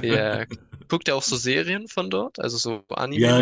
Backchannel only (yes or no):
no